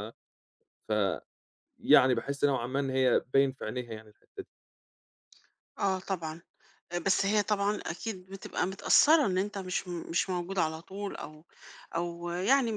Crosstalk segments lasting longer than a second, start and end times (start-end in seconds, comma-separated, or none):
none